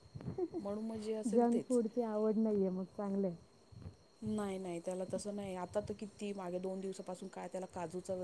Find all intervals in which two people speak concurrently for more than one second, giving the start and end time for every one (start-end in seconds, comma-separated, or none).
none